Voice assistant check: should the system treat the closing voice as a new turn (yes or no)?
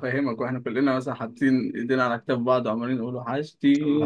yes